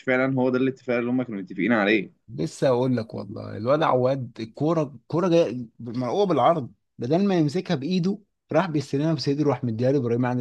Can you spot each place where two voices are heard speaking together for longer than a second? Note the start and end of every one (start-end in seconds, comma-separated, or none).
none